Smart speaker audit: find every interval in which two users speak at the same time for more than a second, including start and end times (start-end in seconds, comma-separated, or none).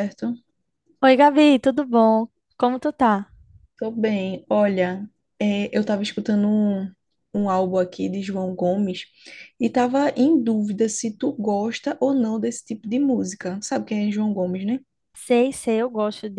none